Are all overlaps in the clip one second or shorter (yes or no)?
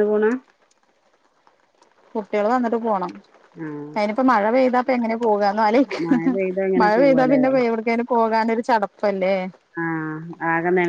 yes